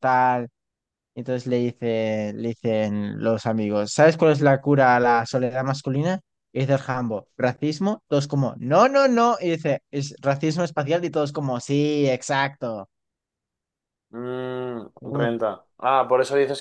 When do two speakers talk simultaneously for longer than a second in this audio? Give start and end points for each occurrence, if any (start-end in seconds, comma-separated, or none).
none